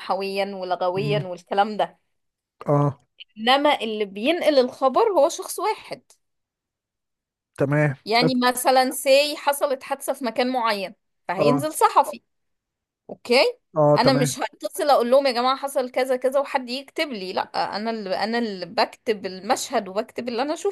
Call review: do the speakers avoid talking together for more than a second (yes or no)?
yes